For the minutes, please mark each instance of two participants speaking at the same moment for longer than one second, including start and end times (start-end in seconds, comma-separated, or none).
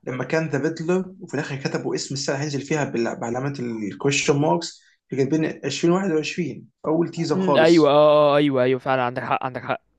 none